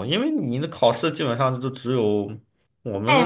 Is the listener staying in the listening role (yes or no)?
no